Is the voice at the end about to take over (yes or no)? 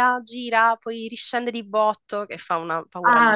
yes